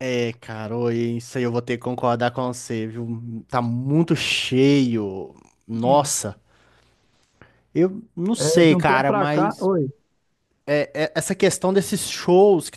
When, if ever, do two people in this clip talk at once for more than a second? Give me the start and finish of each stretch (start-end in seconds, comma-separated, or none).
8.4-9.7